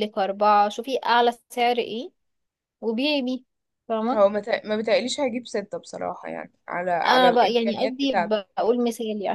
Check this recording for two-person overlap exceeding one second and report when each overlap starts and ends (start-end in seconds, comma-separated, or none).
7.0-8.4